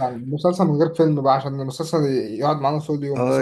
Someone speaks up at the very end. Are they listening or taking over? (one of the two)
taking over